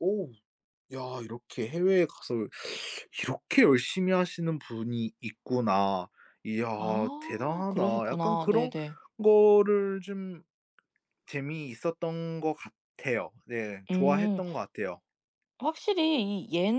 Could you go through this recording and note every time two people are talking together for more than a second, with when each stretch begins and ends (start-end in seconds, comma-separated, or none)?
7.2-8.7